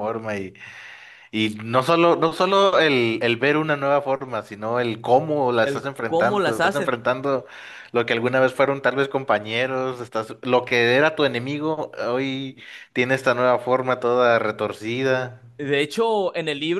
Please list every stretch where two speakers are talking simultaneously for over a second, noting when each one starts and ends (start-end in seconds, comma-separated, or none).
5.6-6.9